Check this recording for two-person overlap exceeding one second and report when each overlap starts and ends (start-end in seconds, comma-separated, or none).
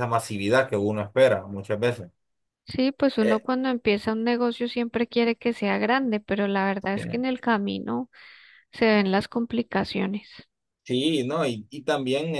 none